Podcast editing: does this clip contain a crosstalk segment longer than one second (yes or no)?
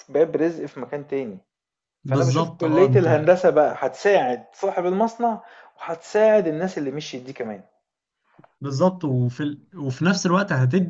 yes